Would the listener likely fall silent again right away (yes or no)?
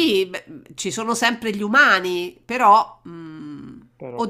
yes